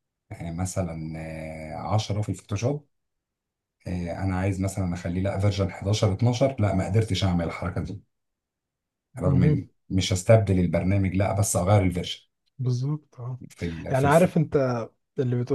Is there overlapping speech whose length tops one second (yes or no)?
no